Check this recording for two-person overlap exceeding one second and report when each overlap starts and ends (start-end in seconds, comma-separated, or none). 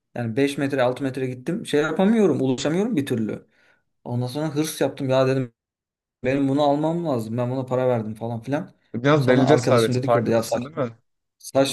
9.2-10.8